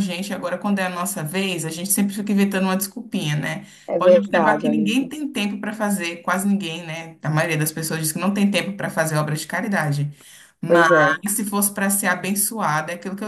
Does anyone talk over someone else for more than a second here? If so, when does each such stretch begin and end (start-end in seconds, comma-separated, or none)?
3.9-5.1